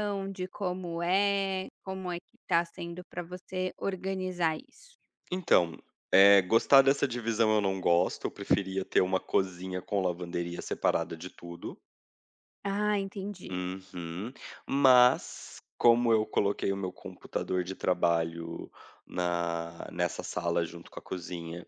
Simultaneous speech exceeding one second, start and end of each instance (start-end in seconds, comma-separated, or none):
none